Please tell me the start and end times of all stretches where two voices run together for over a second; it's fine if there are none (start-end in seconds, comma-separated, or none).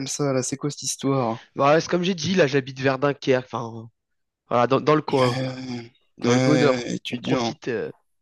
6.2-7.5